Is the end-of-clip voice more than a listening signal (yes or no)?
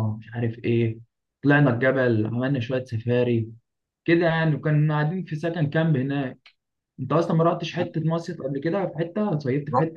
yes